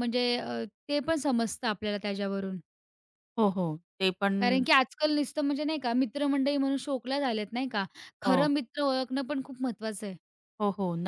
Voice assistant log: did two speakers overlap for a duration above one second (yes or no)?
no